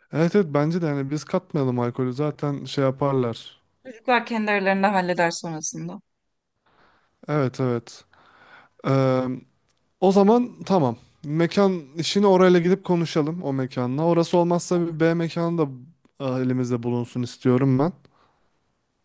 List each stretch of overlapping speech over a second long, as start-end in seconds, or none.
none